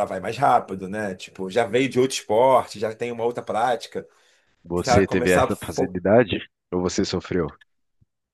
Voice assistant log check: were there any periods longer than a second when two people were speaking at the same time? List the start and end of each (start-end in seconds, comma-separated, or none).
4.8-6.0